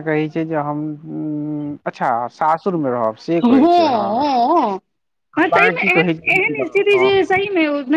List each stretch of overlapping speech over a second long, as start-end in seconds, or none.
5.5-7.1